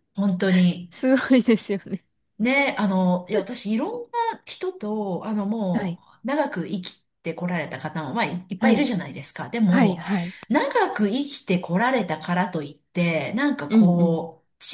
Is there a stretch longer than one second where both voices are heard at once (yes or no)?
no